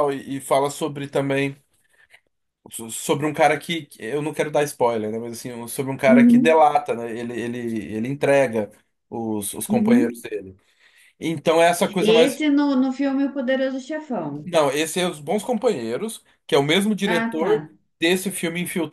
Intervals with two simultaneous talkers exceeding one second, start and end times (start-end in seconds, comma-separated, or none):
none